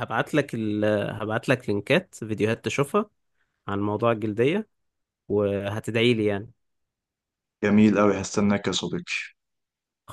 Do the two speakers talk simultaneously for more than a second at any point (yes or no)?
no